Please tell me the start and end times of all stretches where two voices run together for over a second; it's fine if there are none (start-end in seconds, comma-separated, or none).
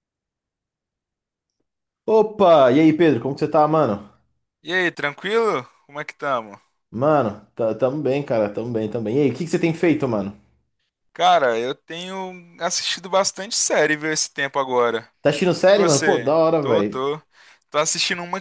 15.7-17.0